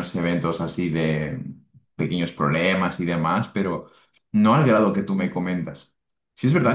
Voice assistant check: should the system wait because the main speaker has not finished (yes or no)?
yes